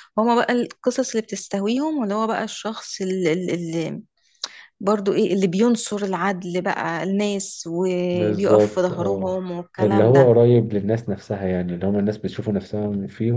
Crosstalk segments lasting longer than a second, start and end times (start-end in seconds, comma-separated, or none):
8.1-10.3